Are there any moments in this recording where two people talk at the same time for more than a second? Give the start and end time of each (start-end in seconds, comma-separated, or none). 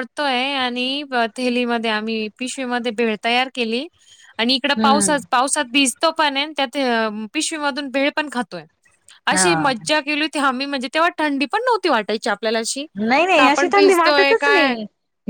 13.4-14.8